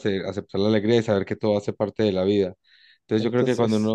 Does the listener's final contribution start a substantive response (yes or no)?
no